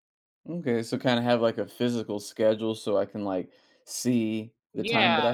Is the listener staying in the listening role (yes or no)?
no